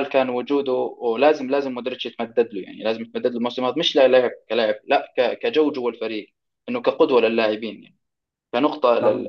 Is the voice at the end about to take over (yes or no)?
no